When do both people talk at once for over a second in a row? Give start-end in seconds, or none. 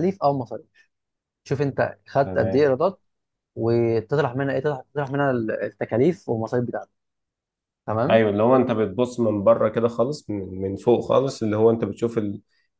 none